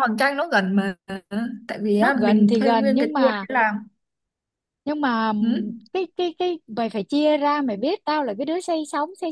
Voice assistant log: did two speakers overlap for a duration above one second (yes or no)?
yes